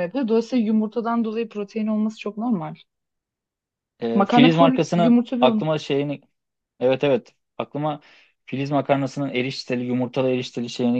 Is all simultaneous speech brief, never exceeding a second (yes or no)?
no